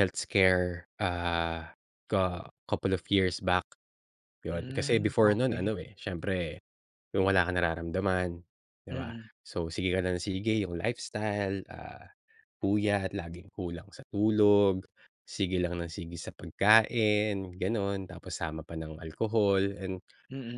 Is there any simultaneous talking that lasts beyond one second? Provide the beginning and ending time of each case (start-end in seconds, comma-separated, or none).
4.5-5.7